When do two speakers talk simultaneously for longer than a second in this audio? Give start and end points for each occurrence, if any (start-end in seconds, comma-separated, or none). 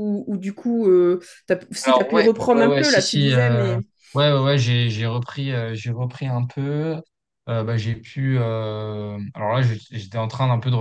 1.8-3.7